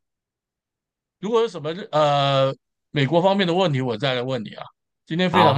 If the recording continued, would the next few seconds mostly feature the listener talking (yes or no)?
yes